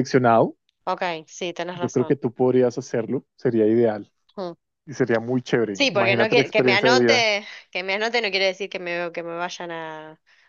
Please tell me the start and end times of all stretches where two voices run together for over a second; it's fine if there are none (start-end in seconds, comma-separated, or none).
5.7-7.3